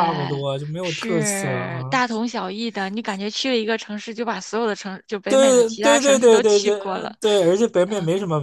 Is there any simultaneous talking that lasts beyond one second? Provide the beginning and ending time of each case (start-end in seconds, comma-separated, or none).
0.8-2.0, 5.3-7.2